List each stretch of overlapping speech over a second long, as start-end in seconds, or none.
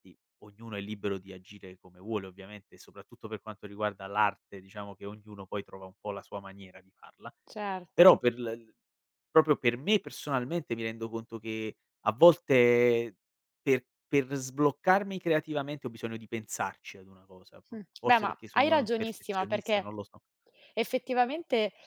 17.7-19.9